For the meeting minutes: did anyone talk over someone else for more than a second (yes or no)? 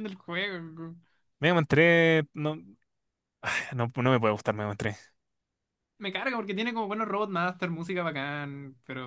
no